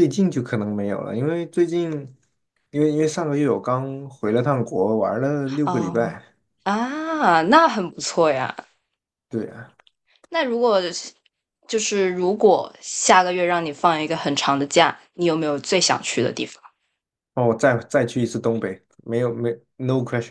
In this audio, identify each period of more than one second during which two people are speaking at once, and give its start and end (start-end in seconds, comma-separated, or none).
none